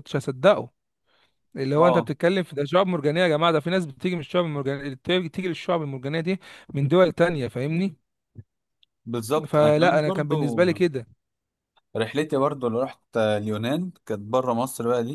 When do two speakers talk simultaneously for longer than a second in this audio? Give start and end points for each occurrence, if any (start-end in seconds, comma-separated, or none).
9.5-10.7